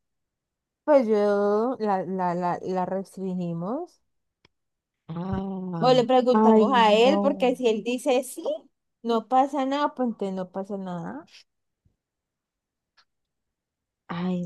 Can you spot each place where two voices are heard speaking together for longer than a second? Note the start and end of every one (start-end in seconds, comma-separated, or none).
5.8-7.6